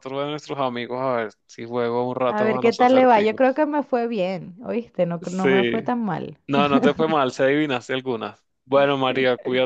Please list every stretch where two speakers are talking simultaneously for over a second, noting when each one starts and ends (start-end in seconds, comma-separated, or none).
2.3-3.6